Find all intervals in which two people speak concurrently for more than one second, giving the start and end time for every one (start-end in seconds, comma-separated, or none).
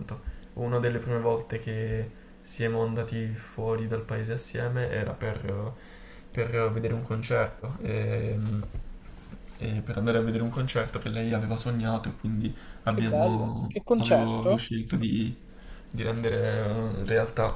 12.9-14.6